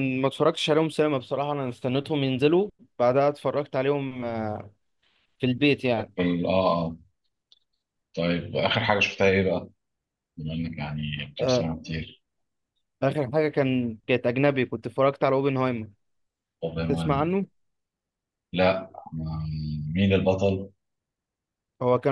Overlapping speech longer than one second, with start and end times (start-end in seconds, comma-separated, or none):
none